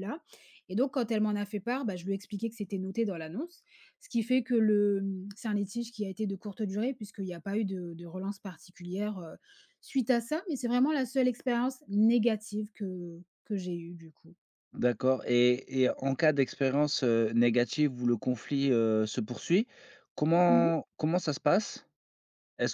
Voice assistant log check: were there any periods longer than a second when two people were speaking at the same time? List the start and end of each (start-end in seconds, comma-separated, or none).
none